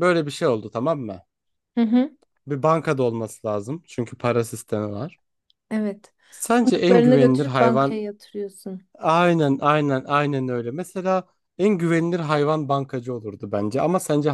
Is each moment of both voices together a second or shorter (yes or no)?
no